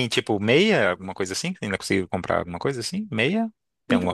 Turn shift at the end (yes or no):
yes